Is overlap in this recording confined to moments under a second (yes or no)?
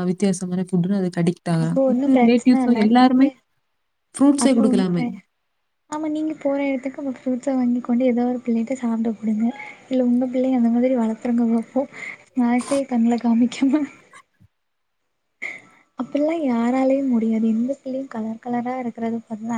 no